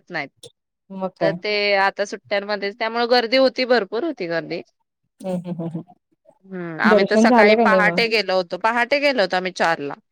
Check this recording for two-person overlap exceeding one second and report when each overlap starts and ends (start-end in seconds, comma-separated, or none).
none